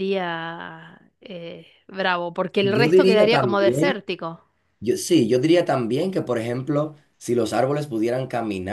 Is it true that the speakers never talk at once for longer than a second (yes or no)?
no